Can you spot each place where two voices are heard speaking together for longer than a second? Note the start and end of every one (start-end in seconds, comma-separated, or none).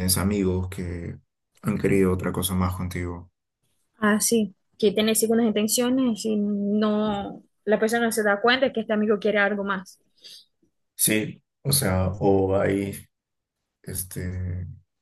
none